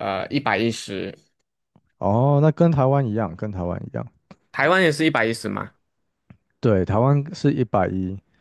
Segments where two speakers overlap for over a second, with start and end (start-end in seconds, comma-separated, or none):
none